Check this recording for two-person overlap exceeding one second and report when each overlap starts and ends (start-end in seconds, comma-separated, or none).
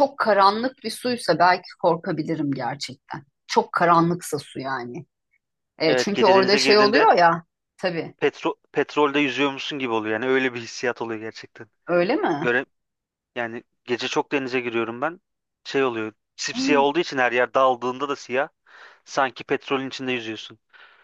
5.9-7.1